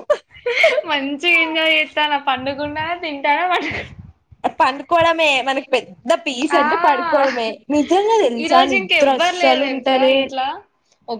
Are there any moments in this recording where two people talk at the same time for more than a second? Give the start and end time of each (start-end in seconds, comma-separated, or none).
8.4-10.1